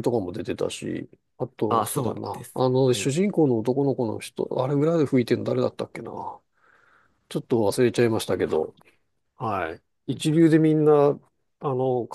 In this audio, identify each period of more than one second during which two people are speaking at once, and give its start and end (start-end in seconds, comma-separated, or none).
1.7-3.2